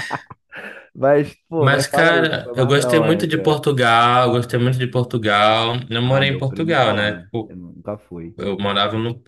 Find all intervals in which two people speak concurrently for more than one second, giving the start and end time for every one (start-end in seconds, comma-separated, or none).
1.6-3.6, 6.0-7.5